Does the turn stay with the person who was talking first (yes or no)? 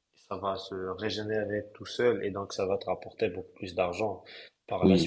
no